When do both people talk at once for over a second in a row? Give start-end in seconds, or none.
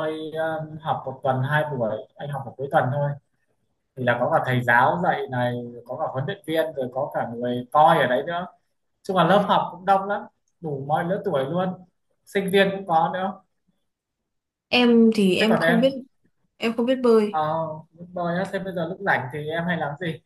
none